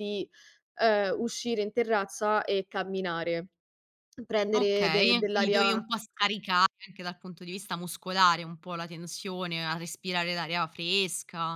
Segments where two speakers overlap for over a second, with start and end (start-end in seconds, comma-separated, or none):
4.5-5.8